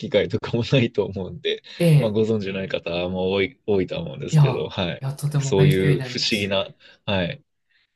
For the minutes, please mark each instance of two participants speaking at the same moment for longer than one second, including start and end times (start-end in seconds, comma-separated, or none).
4.3-6.5